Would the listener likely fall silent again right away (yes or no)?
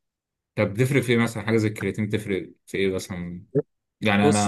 yes